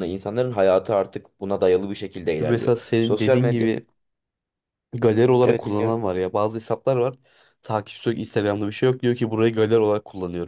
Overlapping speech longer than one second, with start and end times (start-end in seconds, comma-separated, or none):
2.4-3.7